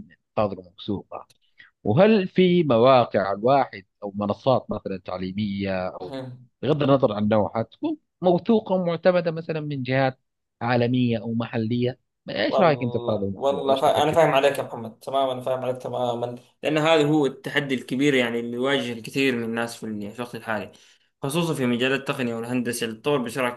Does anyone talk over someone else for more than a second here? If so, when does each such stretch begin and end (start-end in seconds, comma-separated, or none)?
12.5-14.6